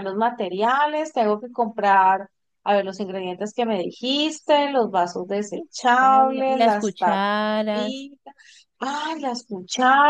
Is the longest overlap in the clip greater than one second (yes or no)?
yes